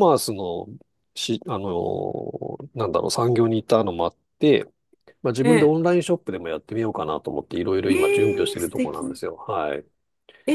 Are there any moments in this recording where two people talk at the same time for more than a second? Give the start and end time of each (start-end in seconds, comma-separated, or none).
7.9-9.2